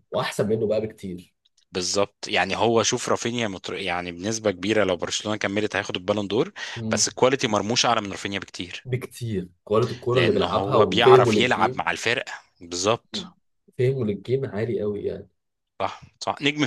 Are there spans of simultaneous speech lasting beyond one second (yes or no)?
yes